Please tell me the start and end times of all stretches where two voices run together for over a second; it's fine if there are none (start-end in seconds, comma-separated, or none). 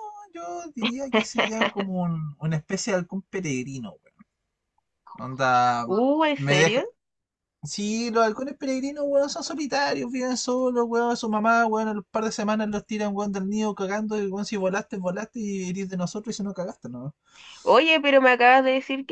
none